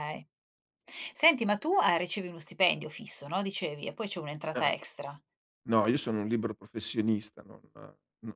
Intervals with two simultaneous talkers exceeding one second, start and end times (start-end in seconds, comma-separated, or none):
none